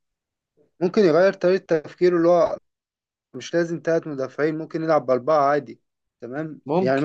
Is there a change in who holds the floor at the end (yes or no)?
no